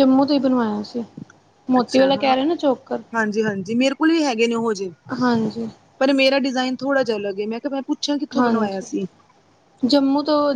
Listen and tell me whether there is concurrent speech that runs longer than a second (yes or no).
no